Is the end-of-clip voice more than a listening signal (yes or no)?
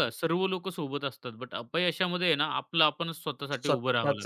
yes